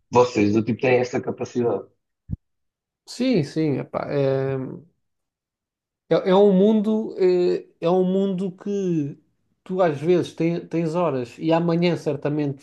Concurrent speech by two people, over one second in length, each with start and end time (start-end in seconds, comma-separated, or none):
none